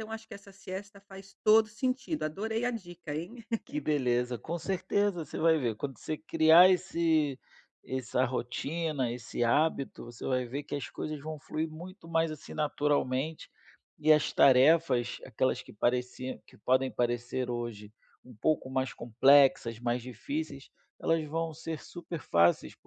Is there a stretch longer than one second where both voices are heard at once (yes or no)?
no